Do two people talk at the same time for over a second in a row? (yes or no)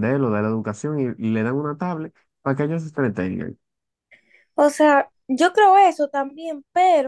no